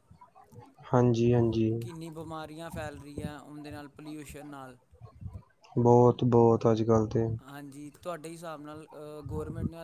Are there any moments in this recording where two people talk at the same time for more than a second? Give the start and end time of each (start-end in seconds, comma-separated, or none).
none